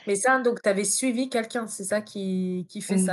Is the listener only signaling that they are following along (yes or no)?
no